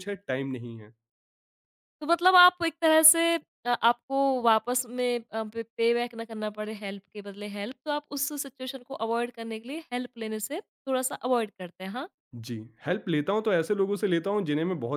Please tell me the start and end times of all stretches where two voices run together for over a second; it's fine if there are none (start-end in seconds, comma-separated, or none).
none